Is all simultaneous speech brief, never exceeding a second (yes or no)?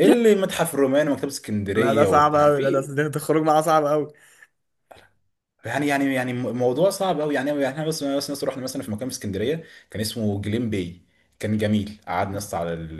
no